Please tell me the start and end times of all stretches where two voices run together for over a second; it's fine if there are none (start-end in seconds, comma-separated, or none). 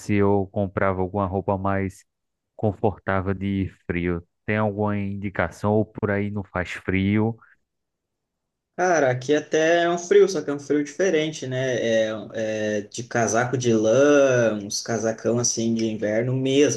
none